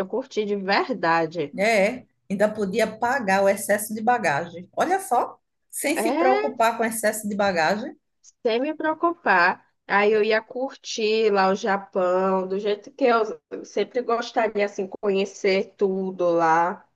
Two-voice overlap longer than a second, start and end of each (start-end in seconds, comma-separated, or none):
none